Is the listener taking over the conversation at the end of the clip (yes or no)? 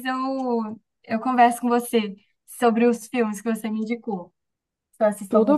no